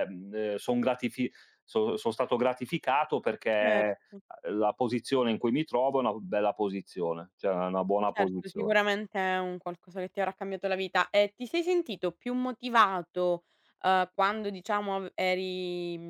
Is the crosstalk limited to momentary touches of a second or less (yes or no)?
yes